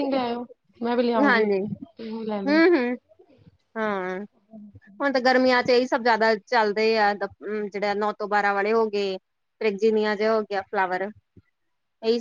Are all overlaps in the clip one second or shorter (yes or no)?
yes